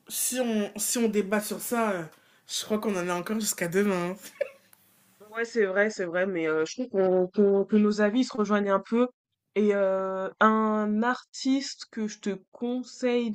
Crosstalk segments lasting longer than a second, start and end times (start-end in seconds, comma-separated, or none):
none